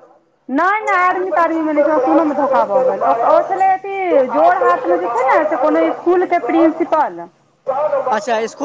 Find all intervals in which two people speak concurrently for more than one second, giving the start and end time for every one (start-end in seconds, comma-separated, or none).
0.9-3.3, 4.4-7.0